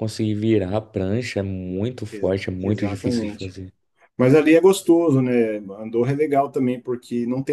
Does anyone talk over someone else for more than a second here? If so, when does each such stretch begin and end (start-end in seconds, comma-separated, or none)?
2.1-3.5